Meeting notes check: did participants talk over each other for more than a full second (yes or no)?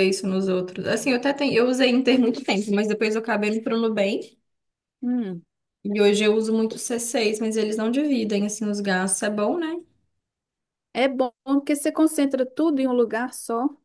no